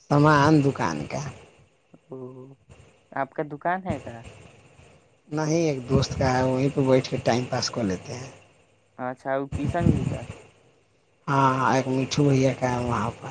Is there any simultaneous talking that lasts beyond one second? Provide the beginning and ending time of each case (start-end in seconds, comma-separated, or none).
none